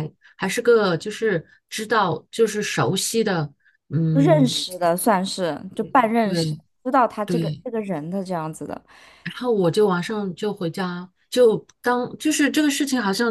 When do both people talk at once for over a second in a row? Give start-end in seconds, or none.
none